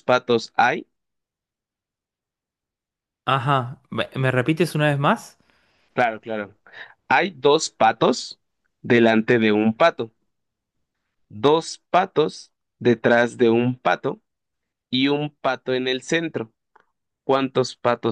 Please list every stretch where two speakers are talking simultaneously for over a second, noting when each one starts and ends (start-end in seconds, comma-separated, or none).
none